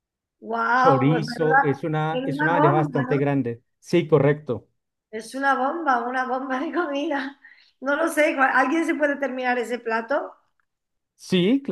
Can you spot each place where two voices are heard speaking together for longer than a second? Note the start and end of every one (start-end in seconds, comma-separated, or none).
0.8-3.1